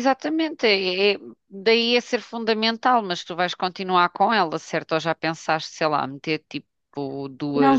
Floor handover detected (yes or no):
yes